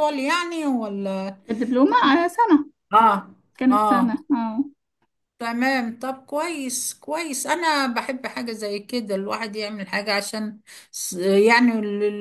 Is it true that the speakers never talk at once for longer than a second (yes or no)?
yes